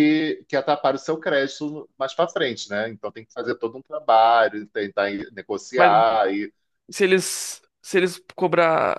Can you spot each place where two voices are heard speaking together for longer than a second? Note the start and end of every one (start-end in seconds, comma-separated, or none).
none